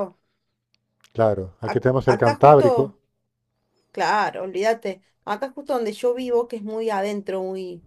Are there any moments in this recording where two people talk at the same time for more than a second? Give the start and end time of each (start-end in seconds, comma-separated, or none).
1.6-3.0